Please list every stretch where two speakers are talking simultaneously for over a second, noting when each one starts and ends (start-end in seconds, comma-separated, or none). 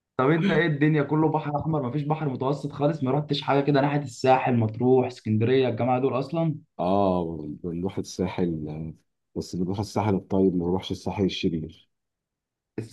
none